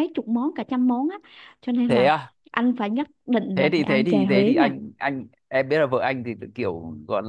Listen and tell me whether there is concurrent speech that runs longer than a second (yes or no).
yes